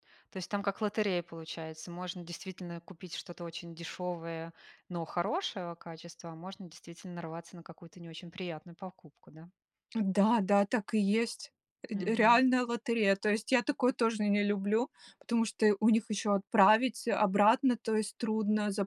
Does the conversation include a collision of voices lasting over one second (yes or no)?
no